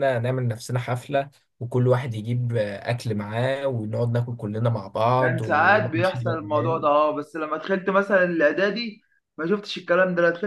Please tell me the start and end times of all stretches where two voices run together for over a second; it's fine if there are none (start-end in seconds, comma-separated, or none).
5.2-6.9